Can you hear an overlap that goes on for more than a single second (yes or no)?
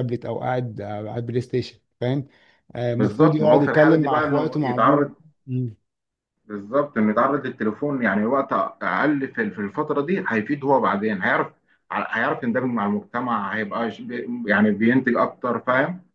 yes